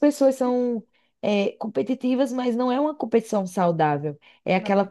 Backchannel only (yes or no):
yes